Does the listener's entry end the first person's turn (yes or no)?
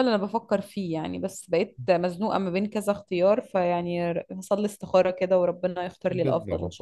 yes